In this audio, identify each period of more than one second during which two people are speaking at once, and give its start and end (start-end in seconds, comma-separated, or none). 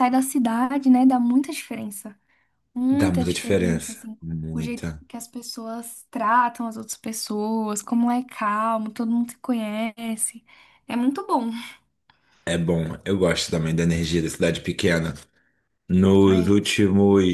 2.9-5.0